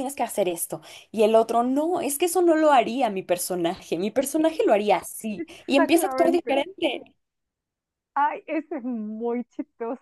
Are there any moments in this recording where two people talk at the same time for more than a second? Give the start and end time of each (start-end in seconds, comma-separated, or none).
5.4-6.6